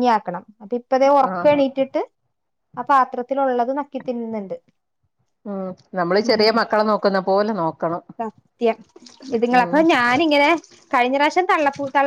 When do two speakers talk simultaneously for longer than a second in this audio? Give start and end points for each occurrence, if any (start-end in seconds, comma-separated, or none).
none